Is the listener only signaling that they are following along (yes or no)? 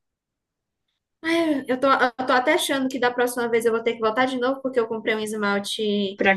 yes